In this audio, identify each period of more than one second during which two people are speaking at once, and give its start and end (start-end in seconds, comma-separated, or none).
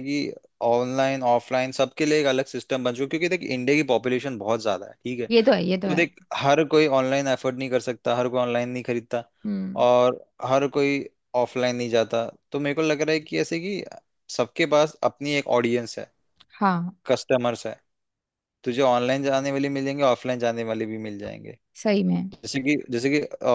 none